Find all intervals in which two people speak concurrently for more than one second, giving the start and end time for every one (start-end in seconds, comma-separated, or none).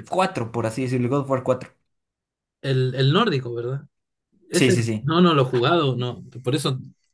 none